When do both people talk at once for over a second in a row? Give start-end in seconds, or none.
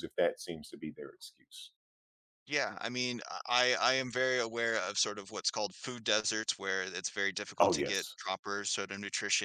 none